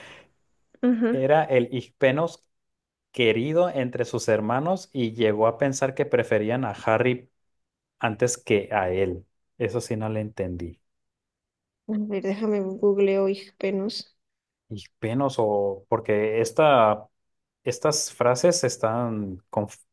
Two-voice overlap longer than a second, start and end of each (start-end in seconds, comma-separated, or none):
none